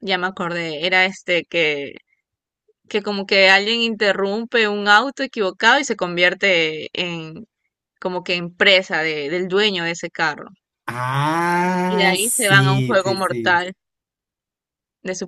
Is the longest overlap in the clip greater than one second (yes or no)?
yes